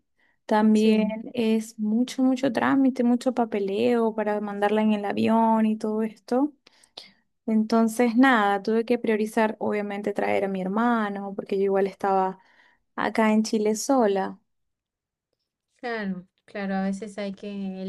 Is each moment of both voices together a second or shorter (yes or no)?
yes